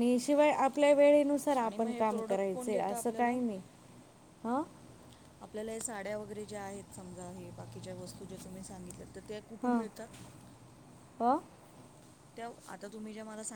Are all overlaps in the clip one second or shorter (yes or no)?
no